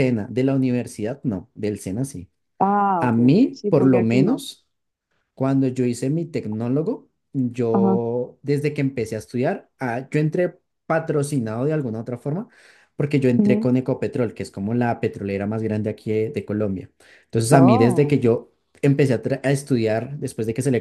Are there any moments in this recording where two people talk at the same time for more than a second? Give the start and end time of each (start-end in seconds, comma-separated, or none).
3.0-4.4